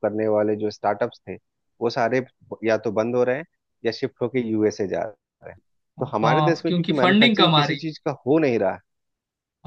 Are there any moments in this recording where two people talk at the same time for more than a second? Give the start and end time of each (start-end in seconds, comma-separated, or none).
6.2-7.9